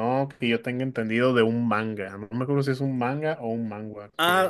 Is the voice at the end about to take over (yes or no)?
yes